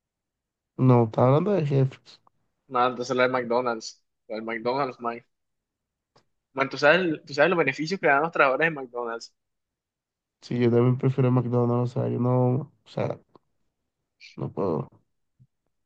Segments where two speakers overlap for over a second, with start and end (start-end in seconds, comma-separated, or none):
none